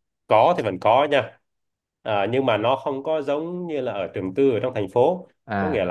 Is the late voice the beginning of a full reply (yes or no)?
no